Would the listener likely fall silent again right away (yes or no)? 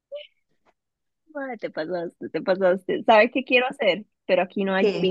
yes